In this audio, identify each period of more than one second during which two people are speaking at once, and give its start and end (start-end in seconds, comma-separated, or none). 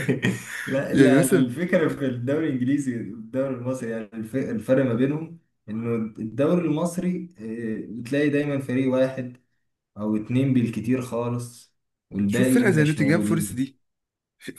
12.3-13.6